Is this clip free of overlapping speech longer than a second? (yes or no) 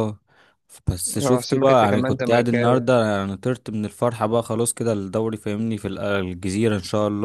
no